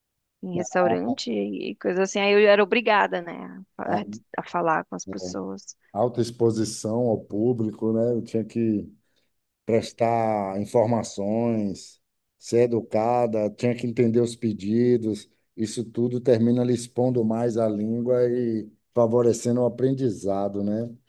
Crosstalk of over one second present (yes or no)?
no